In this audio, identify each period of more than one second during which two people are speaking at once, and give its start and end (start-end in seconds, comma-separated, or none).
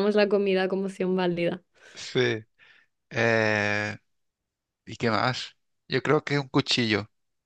none